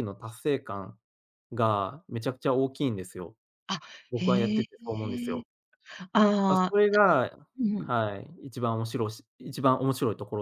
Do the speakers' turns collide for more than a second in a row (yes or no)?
yes